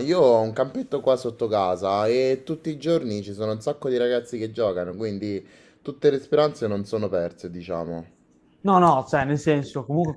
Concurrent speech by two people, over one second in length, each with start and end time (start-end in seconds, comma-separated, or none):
none